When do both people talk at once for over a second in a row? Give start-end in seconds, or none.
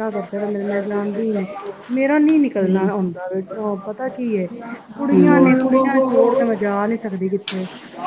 5.1-6.5